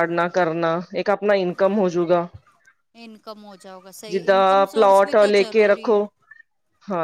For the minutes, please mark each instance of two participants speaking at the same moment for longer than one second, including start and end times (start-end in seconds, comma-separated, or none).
4.1-6.0